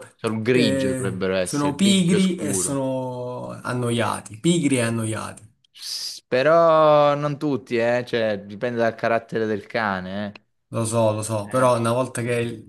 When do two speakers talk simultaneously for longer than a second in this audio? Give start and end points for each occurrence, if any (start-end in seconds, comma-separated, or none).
0.5-2.8